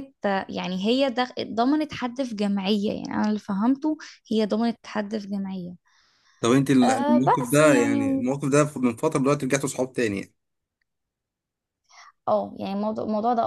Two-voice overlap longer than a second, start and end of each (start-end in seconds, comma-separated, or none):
6.8-8.2